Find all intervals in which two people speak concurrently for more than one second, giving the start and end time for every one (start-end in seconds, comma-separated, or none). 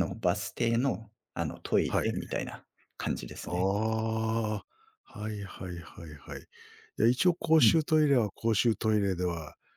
none